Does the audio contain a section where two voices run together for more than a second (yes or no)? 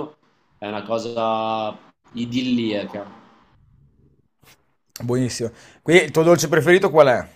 no